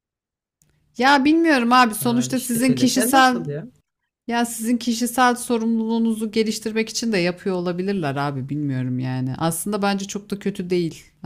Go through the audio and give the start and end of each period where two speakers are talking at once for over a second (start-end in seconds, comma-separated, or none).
2.0-3.4